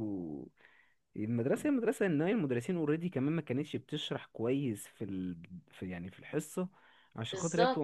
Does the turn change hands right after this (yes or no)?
no